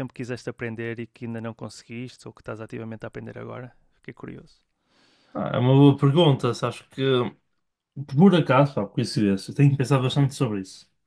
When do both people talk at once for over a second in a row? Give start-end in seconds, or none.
none